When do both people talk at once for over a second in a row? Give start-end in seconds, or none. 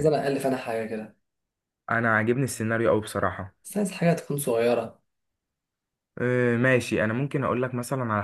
none